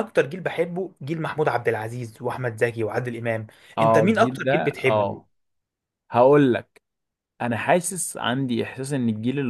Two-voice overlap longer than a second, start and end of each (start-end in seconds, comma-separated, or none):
3.8-5.2